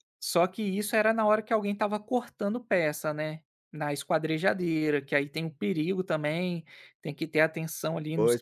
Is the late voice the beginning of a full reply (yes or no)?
yes